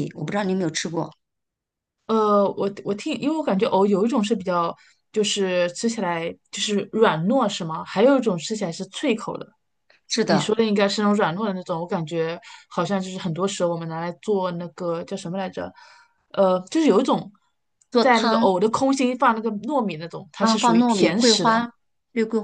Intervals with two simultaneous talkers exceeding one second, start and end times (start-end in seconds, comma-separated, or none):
20.4-21.7